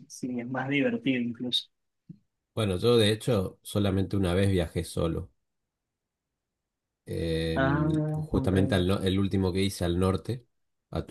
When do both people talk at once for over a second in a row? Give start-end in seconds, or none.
7.5-8.9